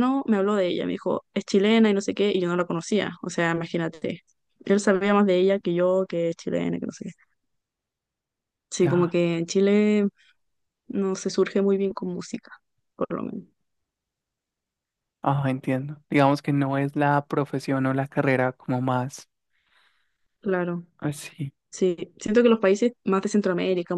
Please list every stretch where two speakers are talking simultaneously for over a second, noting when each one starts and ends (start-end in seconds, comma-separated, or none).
none